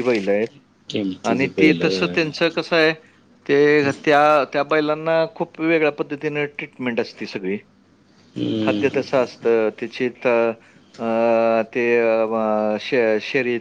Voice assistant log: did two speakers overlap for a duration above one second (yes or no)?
no